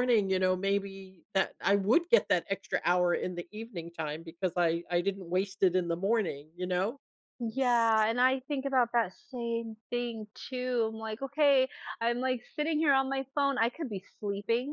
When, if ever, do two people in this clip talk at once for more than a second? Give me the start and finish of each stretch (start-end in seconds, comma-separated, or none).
none